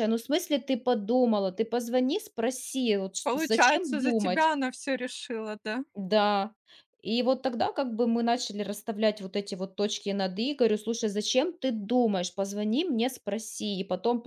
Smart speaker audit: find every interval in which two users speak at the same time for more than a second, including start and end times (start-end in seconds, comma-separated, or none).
3.2-4.5